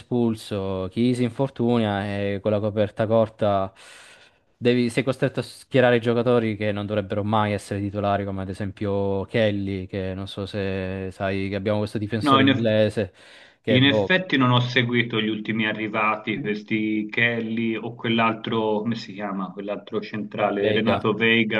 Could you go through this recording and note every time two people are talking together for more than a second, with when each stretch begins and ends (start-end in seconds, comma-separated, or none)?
none